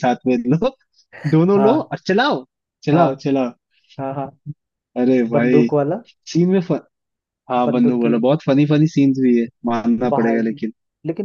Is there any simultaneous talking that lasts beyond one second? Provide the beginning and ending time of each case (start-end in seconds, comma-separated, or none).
none